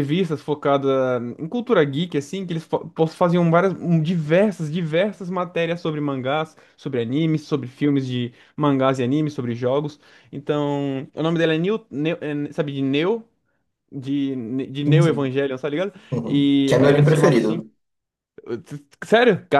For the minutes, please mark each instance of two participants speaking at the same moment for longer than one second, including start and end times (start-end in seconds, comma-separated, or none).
16.1-17.6